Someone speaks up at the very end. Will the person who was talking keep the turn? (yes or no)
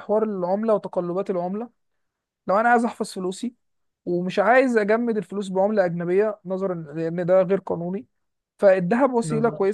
yes